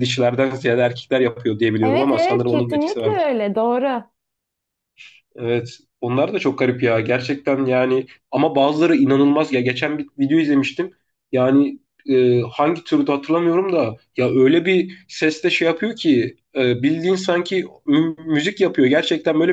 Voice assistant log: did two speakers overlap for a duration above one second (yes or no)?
yes